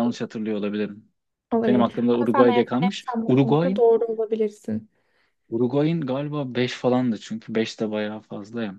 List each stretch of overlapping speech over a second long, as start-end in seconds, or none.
1.7-3.8